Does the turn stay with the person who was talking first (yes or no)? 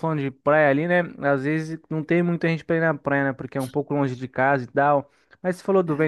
yes